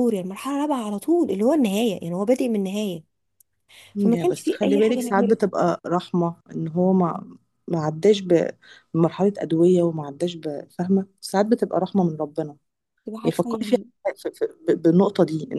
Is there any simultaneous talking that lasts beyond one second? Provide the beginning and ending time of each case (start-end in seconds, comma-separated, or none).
4.0-5.4